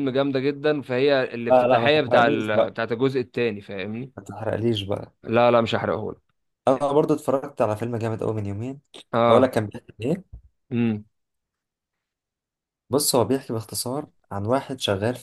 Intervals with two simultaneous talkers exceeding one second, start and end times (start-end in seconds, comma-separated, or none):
1.5-2.7